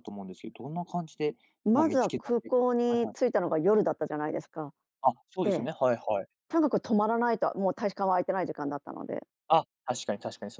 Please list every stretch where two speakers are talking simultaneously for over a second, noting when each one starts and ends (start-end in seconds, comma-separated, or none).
1.7-3.2